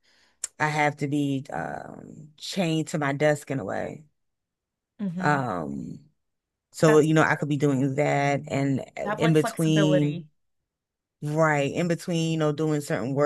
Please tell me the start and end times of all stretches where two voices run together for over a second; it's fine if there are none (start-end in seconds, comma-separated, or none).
9.0-10.3